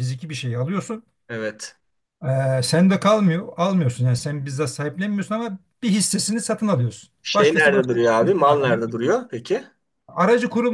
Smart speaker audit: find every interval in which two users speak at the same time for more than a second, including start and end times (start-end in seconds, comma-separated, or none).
7.2-8.8